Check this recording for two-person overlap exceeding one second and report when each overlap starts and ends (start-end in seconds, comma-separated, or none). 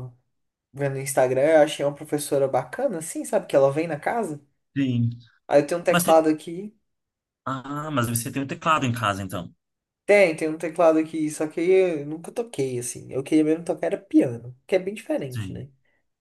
none